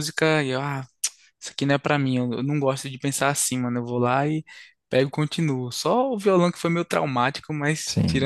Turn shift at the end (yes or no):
yes